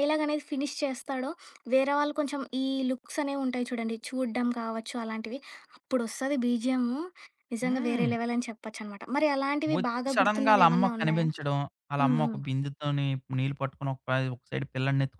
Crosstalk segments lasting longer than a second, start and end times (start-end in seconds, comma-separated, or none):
9.8-11.3